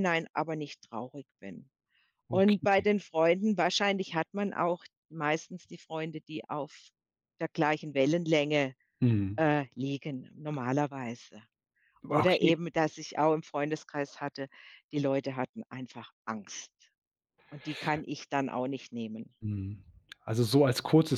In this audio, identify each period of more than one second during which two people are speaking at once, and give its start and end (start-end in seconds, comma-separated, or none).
none